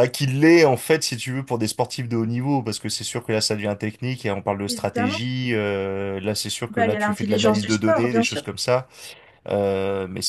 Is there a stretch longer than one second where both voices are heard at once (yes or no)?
yes